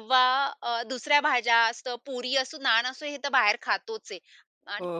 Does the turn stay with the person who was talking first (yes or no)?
yes